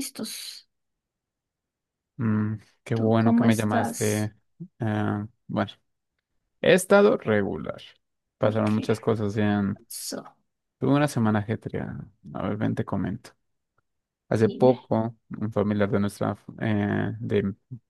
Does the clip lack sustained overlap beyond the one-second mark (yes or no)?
no